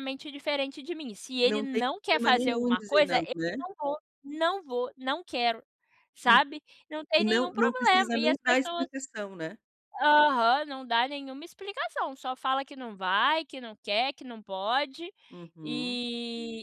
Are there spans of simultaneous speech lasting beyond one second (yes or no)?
yes